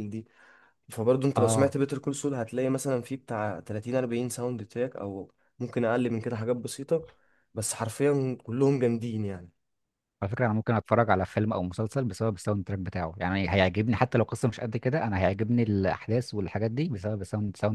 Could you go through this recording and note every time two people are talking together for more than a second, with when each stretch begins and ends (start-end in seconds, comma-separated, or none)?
none